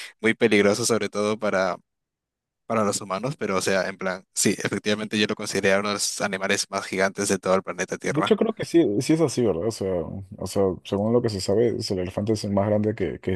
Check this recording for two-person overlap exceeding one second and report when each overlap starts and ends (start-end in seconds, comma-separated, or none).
none